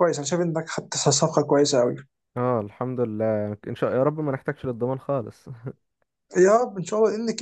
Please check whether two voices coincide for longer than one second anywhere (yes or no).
no